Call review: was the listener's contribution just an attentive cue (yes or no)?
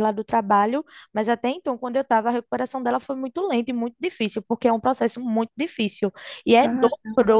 yes